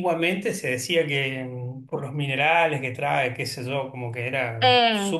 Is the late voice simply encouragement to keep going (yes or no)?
no